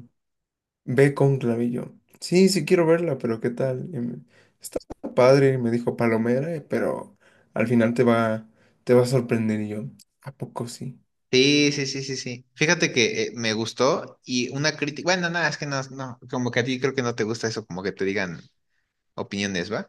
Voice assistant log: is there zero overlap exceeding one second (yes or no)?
yes